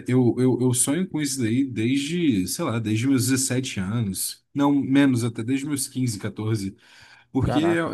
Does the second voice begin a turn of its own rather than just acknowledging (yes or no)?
no